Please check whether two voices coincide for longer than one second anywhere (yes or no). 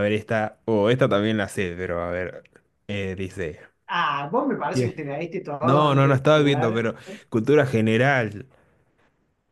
yes